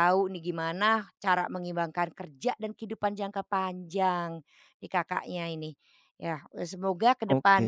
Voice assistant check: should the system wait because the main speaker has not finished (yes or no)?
yes